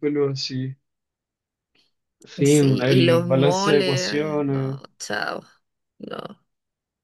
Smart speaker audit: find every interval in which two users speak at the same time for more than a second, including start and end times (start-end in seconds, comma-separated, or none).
2.4-4.8